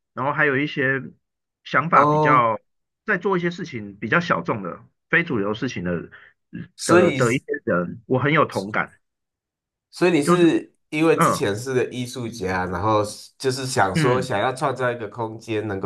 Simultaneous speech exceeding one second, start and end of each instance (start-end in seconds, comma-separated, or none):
none